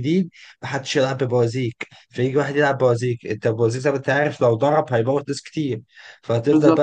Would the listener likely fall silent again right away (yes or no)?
yes